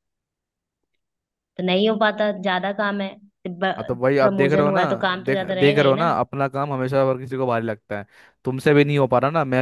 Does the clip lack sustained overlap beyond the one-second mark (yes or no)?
no